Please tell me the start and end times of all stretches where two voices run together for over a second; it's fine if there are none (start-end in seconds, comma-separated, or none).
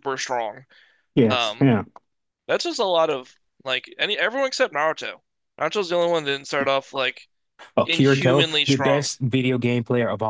7.8-9.1